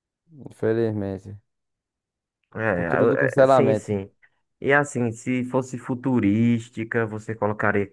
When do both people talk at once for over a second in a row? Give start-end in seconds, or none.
2.7-4.0